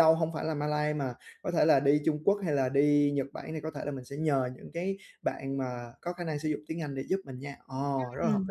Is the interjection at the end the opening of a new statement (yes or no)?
yes